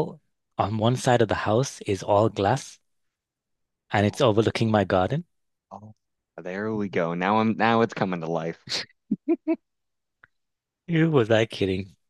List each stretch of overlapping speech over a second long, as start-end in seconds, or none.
none